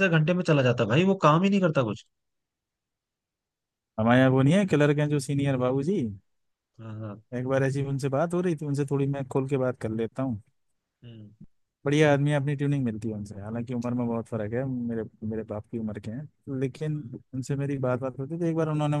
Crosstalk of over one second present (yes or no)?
no